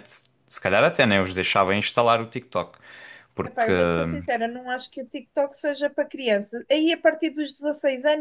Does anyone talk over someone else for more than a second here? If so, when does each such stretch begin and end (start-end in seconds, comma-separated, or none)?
none